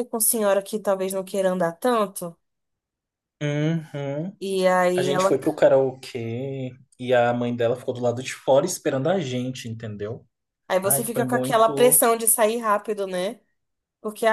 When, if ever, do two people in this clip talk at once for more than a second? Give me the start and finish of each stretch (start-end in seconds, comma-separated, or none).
10.8-12.0